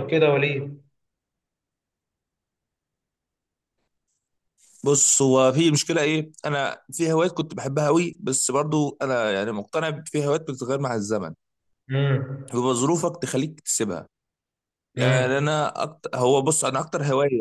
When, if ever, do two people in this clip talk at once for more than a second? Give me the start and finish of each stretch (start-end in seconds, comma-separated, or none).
none